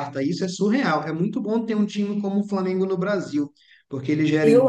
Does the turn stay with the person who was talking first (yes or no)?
no